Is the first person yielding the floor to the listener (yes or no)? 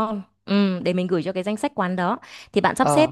no